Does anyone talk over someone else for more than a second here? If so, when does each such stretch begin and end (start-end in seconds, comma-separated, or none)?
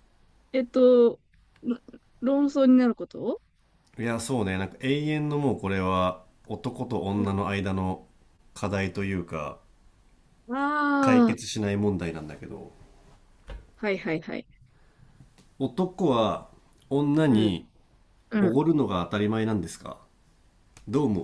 none